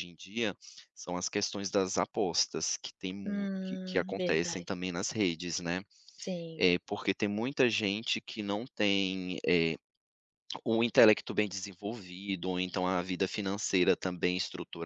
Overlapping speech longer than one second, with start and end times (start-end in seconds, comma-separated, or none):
3.2-4.7